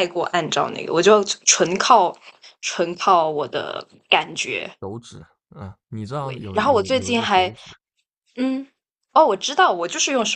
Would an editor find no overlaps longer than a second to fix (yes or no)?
no